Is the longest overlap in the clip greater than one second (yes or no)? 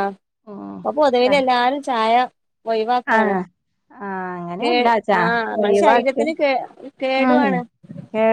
no